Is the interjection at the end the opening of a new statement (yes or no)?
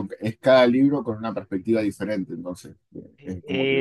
yes